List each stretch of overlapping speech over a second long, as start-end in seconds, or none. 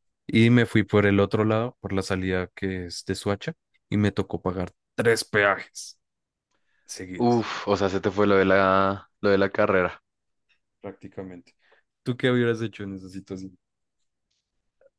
none